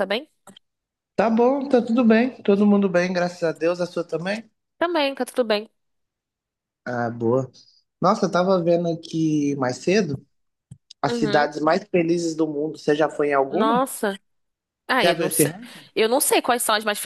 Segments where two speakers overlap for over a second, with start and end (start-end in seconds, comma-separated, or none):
none